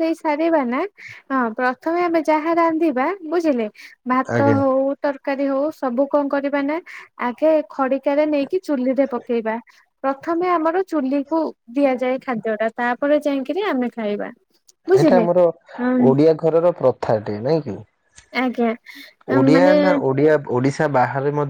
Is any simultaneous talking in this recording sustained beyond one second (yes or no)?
no